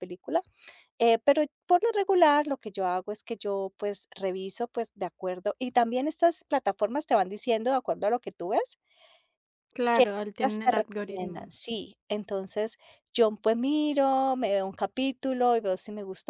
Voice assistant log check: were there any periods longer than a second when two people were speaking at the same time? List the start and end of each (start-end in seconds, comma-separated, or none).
9.9-11.5